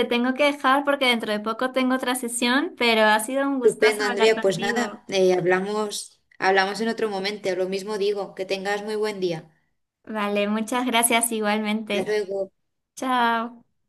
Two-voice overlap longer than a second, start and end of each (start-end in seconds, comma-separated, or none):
3.6-5.0